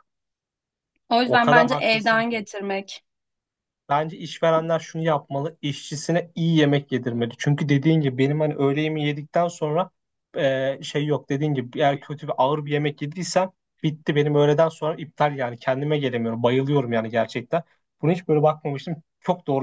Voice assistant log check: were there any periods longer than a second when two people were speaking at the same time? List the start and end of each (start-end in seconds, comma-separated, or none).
1.2-2.5